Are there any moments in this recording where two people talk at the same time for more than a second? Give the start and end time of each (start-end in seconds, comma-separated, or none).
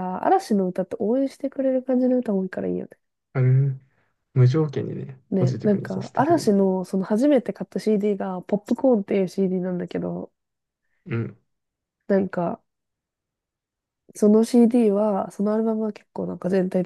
5.3-6.5